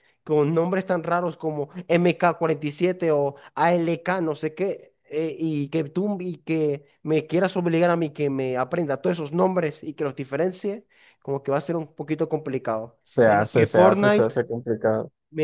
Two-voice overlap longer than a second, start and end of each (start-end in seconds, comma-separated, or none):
13.0-14.3